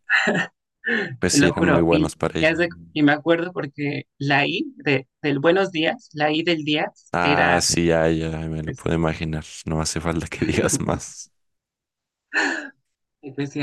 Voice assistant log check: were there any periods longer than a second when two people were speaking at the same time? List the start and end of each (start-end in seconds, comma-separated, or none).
1.3-2.6